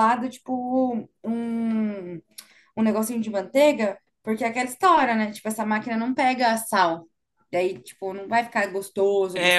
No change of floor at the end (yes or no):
no